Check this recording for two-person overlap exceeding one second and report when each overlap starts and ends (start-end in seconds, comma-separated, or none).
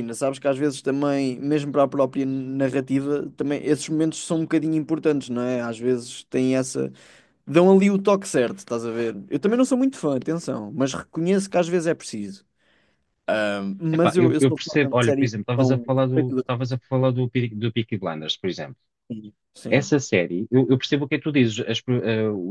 13.9-16.4